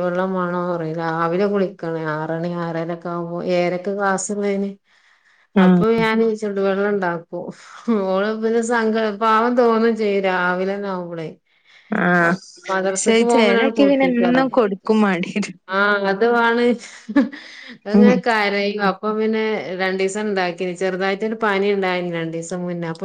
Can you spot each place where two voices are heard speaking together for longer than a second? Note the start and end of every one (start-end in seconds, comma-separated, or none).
12.9-14.4